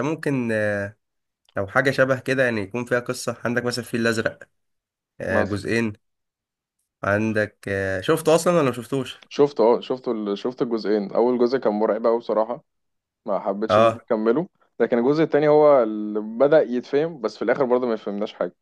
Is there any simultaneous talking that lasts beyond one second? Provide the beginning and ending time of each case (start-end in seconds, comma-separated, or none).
none